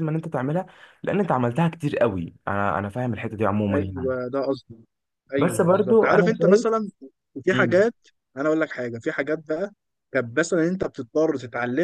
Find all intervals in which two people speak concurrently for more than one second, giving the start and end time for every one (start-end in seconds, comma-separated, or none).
5.4-6.7